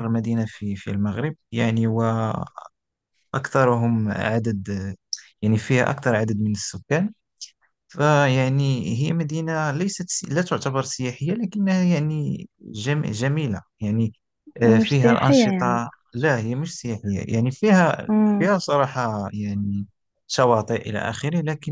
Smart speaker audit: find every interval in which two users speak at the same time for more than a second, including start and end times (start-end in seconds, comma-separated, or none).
14.6-15.8